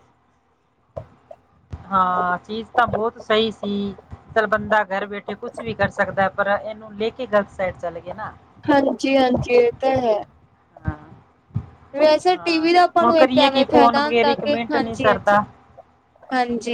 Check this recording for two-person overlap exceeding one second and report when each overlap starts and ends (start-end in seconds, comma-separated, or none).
12.3-15.4